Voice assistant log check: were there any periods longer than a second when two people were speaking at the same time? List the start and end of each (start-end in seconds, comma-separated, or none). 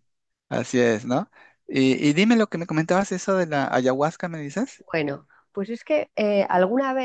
none